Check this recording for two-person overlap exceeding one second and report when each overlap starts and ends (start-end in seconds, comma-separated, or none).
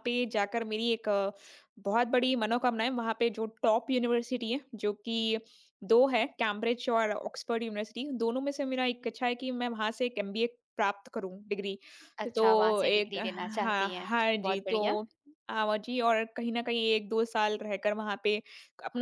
12.3-15.0